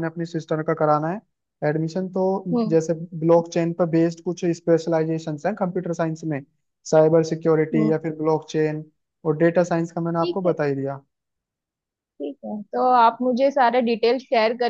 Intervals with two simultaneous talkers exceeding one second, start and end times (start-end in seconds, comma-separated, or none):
none